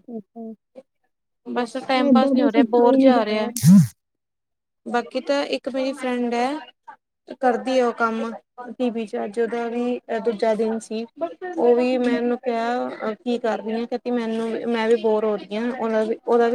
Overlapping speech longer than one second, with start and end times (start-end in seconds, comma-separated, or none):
2.1-3.5